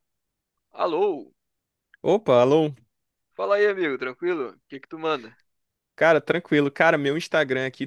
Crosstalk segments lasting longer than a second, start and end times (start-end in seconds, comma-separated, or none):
none